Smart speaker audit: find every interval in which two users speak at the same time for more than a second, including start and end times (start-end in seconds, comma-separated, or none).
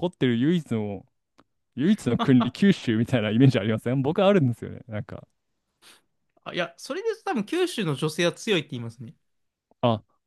none